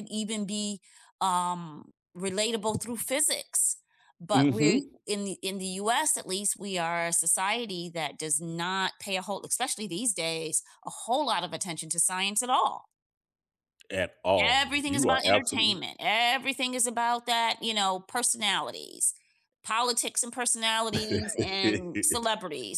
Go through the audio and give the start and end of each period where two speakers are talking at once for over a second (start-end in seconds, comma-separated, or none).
14.4-15.8